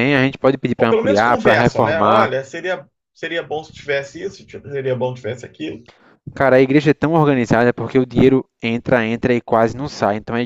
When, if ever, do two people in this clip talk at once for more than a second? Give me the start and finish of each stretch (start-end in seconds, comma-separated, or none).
0.8-2.3